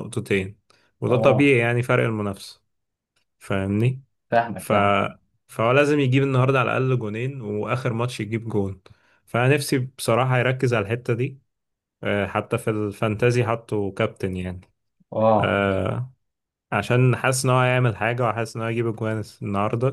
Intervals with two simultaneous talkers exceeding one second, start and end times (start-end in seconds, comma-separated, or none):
none